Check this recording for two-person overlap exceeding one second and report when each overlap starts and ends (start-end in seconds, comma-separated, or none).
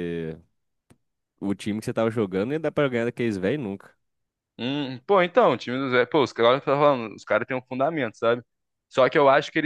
none